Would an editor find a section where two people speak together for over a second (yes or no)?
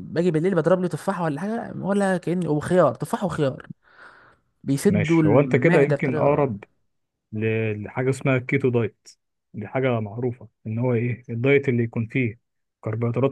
yes